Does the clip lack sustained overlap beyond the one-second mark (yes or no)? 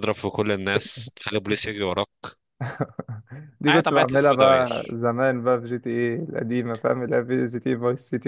no